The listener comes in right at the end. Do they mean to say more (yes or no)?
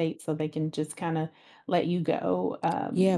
yes